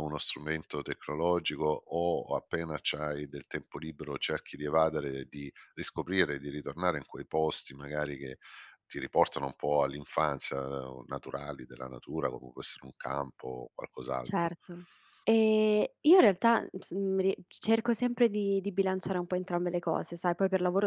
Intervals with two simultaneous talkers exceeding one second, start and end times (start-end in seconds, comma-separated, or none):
none